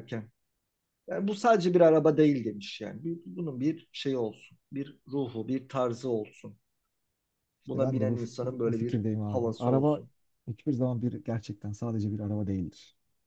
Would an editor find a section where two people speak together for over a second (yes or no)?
yes